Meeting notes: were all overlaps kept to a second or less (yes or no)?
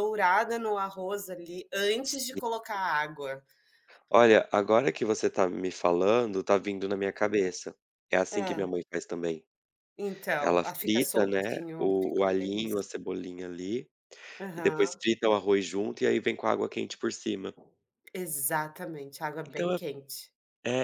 no